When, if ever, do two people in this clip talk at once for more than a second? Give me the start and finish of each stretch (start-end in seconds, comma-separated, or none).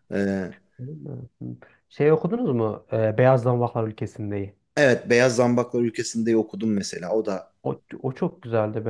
none